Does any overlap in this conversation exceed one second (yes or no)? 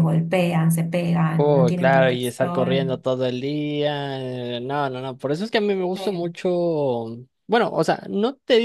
yes